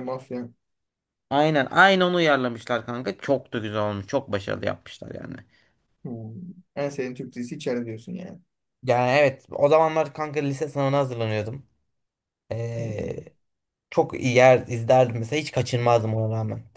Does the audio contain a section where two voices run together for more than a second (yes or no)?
no